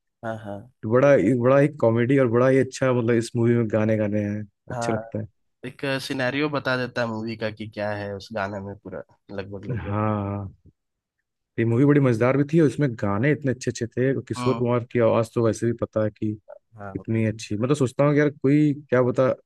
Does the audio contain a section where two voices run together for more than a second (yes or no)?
no